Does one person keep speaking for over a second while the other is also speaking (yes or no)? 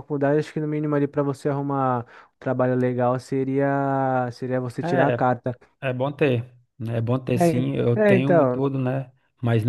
yes